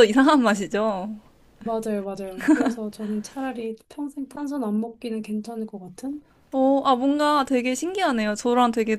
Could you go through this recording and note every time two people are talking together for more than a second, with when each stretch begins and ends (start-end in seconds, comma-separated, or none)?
none